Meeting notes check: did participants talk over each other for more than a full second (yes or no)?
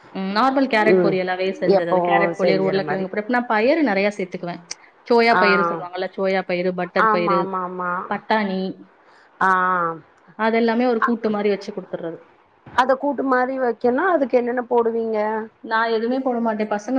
yes